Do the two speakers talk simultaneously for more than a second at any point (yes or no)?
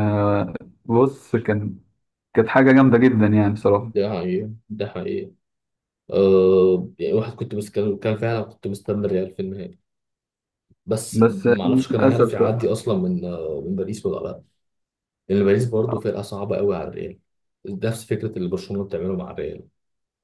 yes